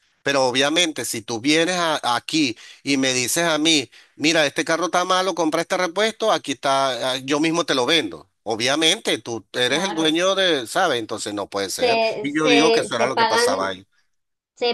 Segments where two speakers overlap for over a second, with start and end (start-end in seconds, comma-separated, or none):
11.7-13.6